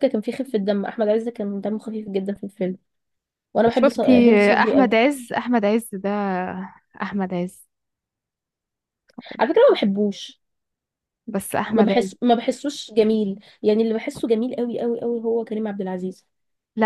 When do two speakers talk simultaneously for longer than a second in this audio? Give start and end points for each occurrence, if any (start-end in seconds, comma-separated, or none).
3.7-4.9